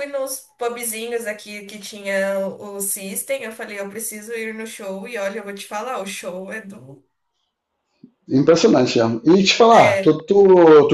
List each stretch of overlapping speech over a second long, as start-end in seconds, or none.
none